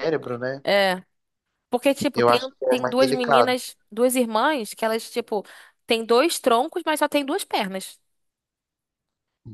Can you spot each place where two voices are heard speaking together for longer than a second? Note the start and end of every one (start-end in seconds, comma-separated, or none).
2.1-3.6